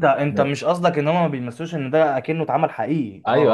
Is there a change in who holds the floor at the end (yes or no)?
yes